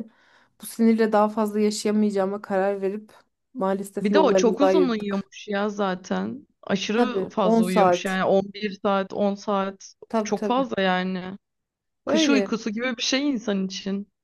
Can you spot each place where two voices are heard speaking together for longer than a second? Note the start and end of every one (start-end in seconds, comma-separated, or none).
4.0-5.3, 6.9-8.2